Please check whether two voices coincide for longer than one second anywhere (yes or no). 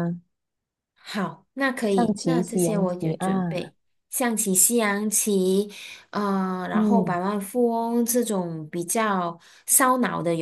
yes